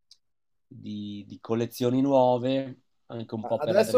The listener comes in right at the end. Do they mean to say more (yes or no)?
yes